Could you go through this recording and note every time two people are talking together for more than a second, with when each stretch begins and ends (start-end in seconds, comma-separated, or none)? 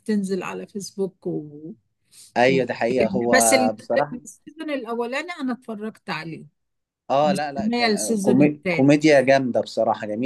7.2-9.0